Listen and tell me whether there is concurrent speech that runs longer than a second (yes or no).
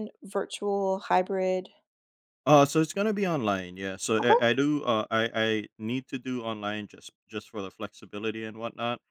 no